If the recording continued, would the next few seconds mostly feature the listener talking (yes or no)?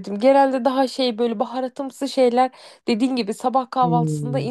no